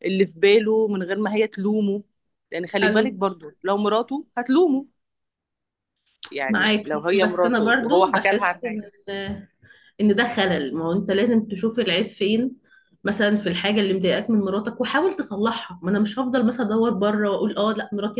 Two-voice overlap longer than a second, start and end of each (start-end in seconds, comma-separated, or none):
6.5-8.8